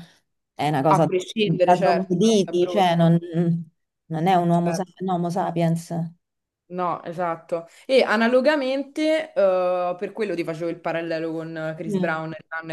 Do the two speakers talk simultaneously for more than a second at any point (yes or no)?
yes